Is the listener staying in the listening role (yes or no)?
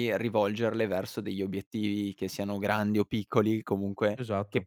yes